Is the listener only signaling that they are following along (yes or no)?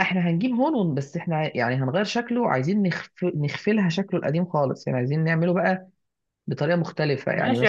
no